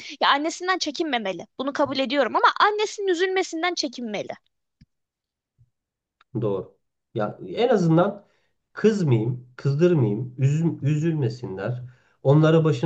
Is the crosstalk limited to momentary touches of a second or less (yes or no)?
yes